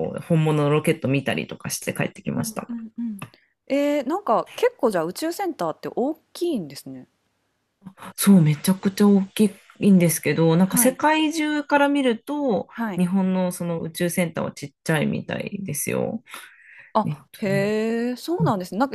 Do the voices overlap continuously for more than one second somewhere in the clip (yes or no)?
no